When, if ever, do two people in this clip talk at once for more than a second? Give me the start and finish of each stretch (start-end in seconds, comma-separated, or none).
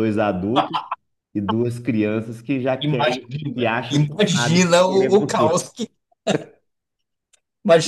2.8-5.7